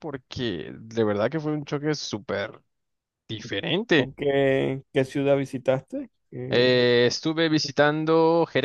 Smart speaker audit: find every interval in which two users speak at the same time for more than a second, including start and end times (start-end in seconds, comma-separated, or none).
none